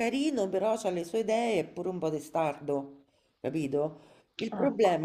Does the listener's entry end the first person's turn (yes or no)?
no